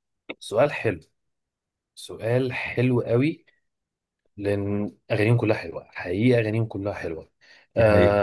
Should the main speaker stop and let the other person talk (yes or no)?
no